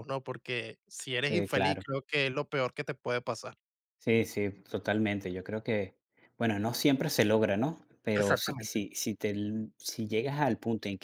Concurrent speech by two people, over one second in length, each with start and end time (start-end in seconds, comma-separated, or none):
none